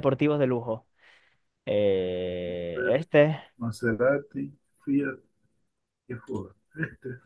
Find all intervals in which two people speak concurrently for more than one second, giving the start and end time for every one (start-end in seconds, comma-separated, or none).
none